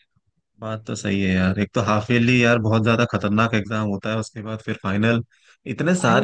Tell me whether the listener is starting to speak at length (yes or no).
no